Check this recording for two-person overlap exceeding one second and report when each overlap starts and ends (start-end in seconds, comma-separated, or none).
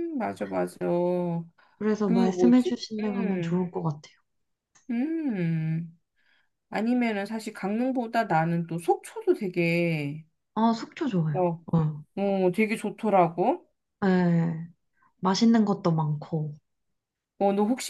2.0-3.6